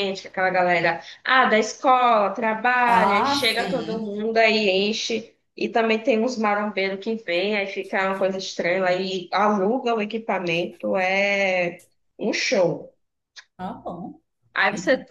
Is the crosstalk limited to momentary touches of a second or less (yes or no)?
no